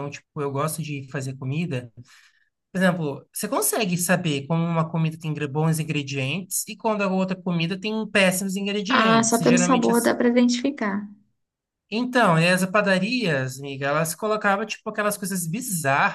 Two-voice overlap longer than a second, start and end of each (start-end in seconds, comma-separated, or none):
8.9-10.1